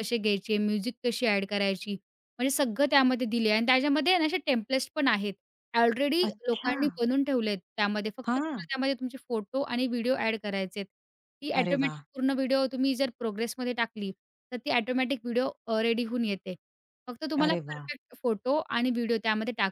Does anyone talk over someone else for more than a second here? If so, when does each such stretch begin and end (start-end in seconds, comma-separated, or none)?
none